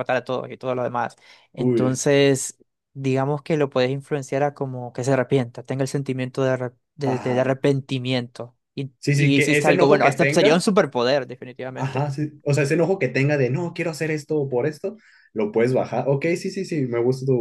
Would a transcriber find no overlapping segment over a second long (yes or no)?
no